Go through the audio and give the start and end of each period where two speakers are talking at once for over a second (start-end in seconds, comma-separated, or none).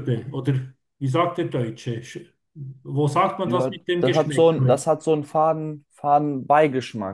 3.4-4.8